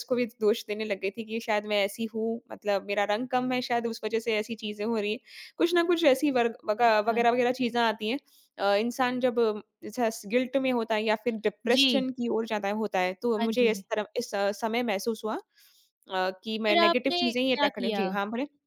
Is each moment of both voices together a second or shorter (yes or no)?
no